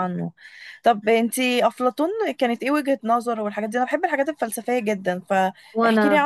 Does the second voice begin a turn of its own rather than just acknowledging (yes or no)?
no